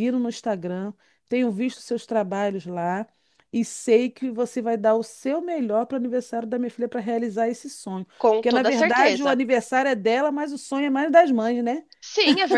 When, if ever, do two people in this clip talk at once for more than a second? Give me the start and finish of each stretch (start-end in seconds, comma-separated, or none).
8.2-9.4